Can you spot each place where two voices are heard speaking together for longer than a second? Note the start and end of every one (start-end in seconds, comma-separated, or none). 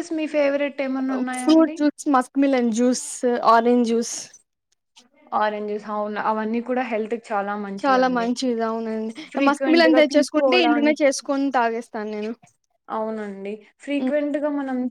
9.5-10.9